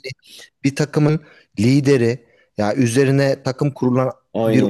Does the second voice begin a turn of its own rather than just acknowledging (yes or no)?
no